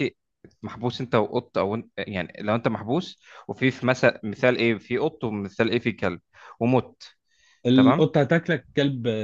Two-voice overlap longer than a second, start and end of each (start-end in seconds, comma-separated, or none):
none